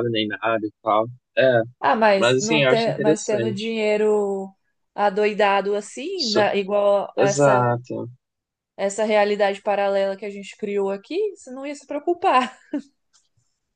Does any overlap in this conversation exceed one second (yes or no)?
yes